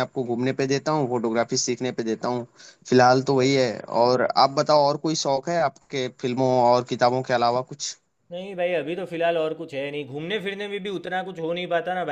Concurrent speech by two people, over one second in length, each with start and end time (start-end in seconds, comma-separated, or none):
none